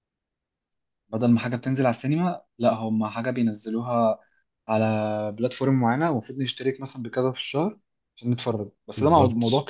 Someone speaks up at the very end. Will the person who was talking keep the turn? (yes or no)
yes